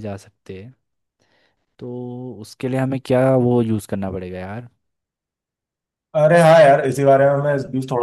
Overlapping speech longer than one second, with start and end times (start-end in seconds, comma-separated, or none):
none